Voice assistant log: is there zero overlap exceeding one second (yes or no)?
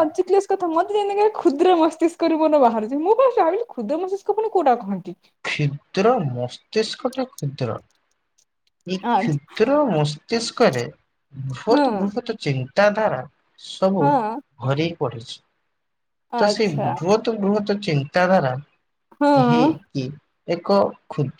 yes